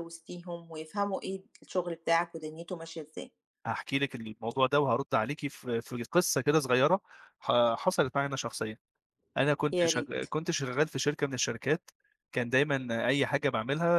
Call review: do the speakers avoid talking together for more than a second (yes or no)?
yes